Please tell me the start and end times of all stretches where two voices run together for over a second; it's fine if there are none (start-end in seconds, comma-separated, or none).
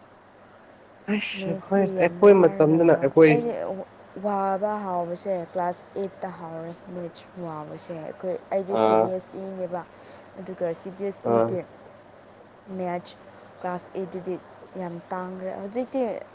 1.1-3.3